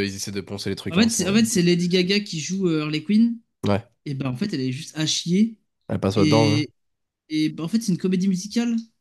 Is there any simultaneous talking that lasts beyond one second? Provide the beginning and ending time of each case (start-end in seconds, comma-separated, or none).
none